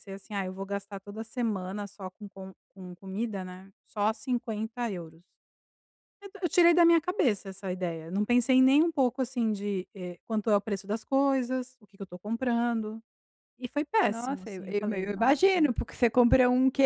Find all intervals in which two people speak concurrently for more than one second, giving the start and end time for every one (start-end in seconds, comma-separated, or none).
14.1-15.7